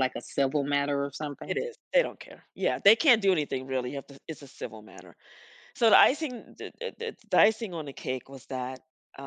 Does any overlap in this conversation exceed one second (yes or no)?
no